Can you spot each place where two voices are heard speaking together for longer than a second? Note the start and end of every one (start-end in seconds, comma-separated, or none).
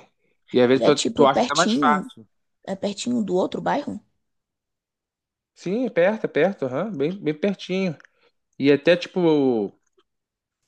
0.7-2.1